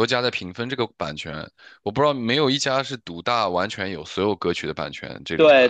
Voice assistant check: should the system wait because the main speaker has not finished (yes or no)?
no